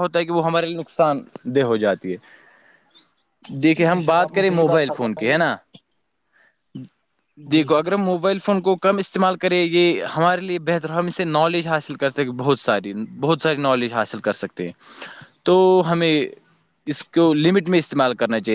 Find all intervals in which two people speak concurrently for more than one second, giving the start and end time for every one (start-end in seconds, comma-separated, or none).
3.6-5.4